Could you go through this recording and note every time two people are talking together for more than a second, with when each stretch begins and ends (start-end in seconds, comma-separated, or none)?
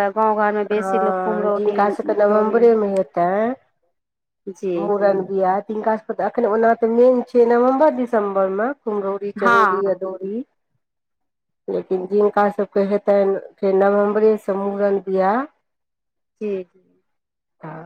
0.8-2.6